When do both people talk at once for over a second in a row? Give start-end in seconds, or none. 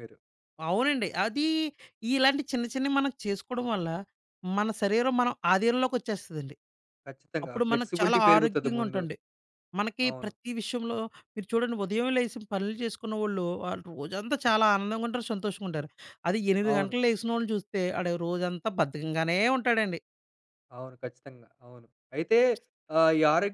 7.4-9.0